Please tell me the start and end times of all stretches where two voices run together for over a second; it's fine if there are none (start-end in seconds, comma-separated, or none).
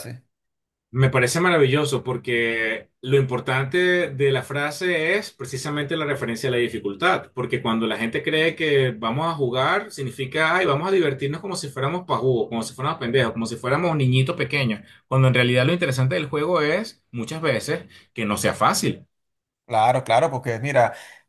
none